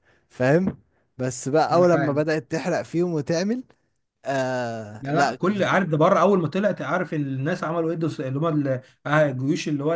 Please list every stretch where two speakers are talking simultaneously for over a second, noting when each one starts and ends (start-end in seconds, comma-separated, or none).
none